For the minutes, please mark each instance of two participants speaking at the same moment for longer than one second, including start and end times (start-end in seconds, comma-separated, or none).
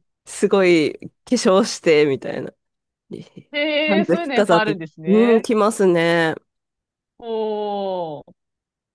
3.9-5.4